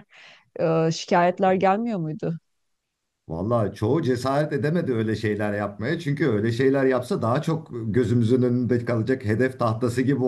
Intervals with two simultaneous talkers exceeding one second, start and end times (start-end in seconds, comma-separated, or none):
none